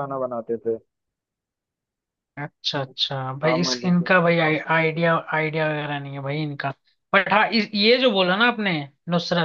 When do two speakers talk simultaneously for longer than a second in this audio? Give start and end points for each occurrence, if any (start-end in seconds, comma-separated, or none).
2.8-4.1